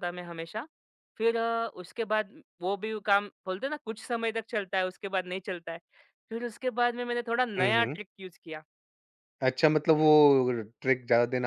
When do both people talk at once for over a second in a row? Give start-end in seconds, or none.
none